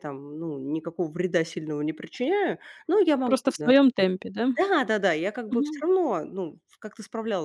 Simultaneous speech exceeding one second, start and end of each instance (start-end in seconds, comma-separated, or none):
none